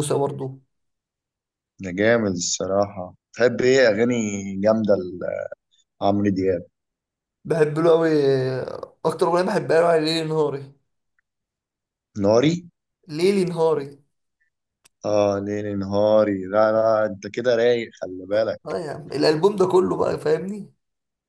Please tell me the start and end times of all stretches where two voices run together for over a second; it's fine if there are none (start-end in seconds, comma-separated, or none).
none